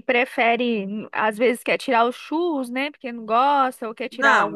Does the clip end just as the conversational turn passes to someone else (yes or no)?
yes